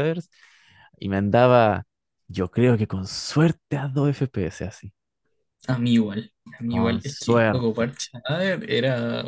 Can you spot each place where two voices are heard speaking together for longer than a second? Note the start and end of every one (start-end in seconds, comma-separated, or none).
6.7-7.9